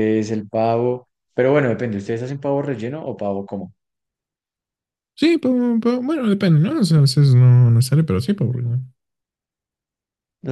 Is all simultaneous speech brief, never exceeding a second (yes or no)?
yes